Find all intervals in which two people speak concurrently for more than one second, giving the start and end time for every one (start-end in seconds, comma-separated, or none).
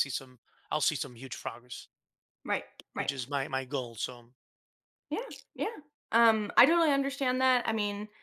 none